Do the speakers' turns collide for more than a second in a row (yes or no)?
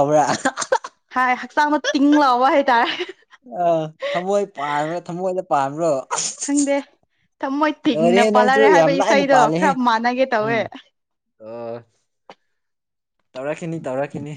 yes